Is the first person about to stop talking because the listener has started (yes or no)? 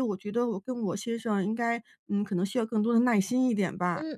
yes